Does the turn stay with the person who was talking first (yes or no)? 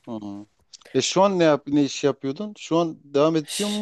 no